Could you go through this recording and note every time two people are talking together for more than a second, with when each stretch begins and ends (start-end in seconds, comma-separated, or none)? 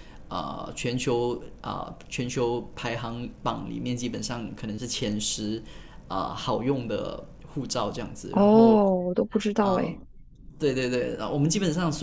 none